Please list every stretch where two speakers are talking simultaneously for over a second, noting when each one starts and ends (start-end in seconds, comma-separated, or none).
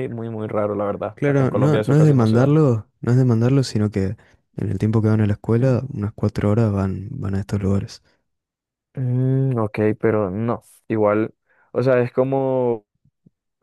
1.1-2.6